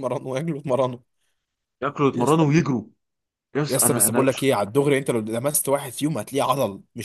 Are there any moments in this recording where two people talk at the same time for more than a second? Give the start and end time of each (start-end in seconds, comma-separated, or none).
none